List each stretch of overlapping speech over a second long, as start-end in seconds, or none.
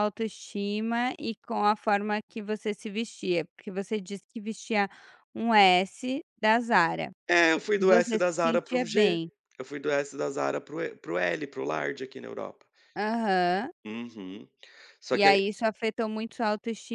7.8-9.2